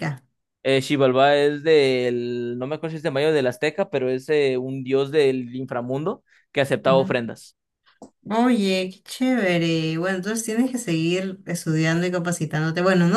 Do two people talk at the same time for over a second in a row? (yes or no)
no